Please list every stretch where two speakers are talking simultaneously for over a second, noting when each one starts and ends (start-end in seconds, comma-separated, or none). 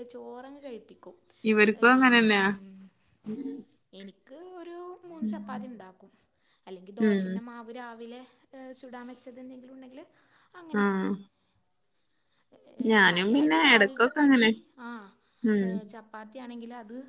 13.1-14.4